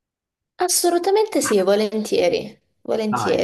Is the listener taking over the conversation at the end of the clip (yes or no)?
yes